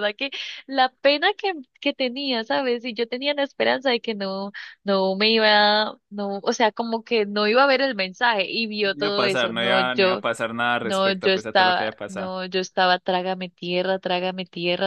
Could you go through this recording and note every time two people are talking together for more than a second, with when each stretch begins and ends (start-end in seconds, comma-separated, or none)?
8.8-10.2, 10.8-12.3